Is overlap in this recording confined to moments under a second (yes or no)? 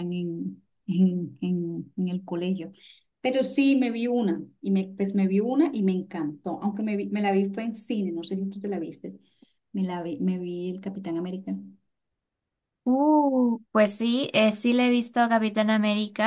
yes